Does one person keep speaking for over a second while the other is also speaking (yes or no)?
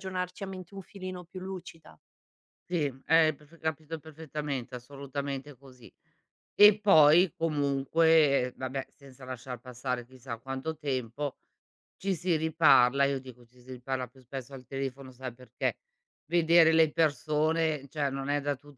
no